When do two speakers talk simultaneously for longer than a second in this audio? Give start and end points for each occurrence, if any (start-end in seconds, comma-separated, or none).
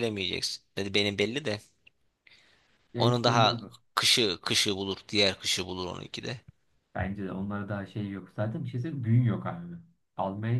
none